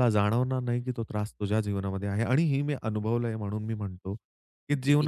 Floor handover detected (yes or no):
no